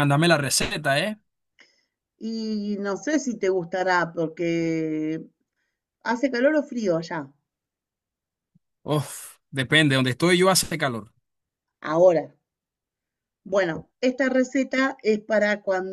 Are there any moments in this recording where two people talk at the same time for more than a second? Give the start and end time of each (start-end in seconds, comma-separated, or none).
none